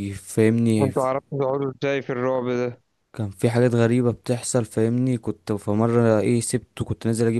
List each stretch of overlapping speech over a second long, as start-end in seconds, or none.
none